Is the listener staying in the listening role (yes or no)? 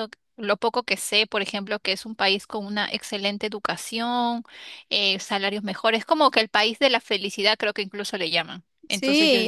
no